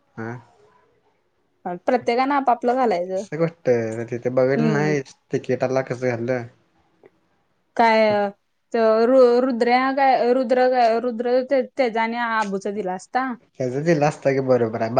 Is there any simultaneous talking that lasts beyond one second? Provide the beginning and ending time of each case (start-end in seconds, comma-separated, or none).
none